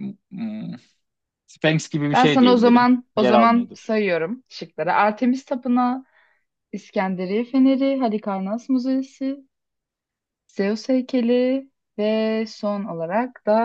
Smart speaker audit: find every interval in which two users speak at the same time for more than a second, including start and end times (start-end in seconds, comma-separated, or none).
2.1-3.9